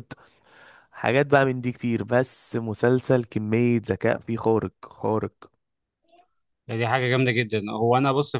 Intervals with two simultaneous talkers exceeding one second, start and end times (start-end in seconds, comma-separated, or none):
none